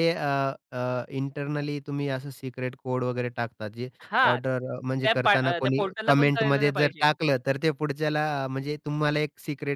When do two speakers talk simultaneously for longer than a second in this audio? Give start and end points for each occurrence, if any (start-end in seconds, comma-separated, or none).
5.0-7.1